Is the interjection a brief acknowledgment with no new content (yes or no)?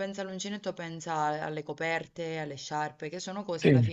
no